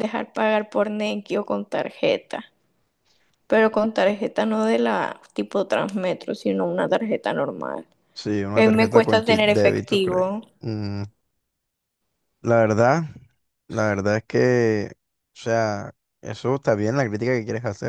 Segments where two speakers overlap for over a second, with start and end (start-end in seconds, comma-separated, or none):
8.6-10.2